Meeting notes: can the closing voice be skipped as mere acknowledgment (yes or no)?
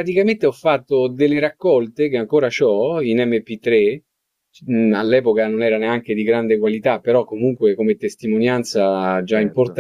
yes